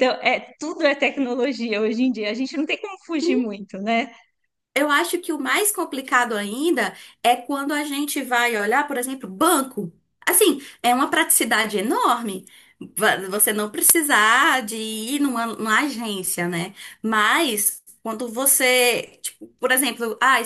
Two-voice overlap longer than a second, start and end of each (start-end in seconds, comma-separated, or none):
none